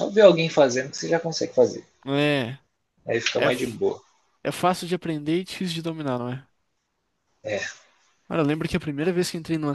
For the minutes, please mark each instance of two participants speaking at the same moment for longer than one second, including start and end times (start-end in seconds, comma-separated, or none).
none